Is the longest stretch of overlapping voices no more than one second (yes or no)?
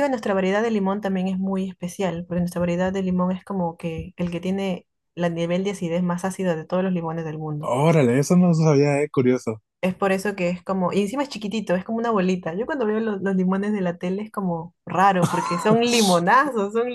yes